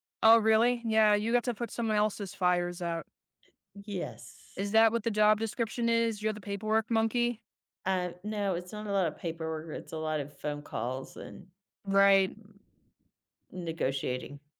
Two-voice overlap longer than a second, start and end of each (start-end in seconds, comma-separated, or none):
none